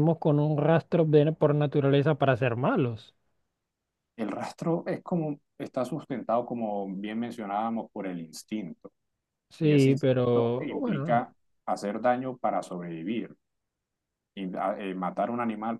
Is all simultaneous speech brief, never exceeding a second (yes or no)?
no